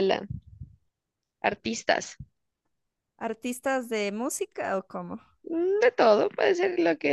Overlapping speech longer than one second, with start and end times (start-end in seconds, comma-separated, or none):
none